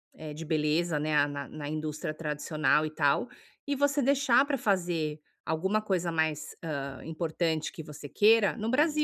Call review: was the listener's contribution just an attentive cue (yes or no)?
no